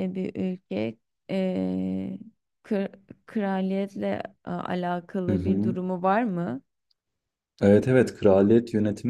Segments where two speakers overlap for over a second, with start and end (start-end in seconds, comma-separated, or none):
none